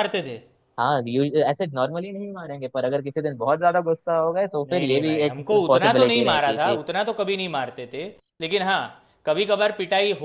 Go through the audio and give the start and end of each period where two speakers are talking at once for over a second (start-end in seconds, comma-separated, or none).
4.7-6.8